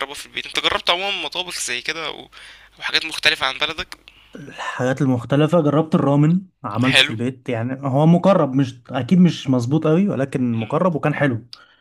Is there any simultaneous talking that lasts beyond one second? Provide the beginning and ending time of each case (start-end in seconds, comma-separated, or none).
none